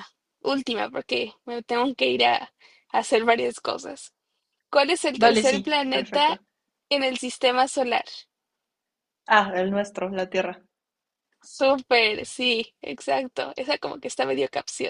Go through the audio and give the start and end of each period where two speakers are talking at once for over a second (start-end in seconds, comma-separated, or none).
5.2-6.4